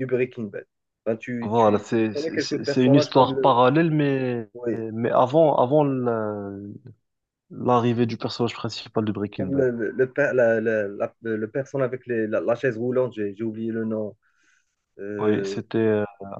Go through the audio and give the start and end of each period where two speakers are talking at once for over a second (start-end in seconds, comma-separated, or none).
1.4-3.6